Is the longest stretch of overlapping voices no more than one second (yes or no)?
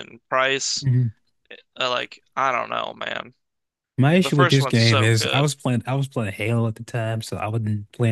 no